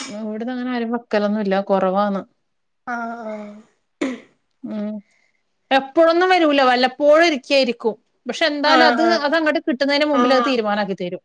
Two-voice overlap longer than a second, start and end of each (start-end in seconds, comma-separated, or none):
none